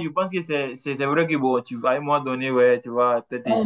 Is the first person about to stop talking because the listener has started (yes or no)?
no